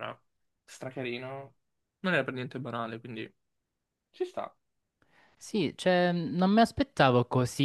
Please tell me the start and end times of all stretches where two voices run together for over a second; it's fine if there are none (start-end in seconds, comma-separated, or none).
none